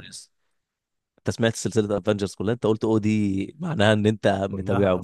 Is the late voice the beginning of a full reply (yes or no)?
yes